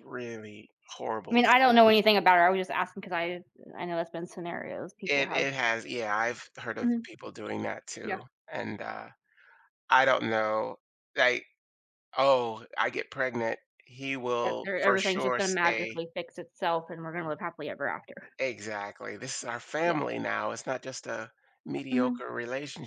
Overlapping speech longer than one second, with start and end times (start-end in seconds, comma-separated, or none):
14.4-16.0